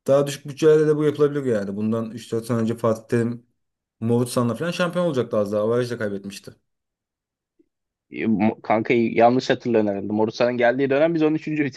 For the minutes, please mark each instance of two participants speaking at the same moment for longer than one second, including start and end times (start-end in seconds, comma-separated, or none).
none